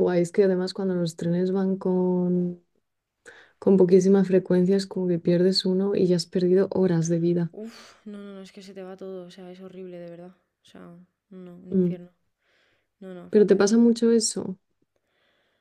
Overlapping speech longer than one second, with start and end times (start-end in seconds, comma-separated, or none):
none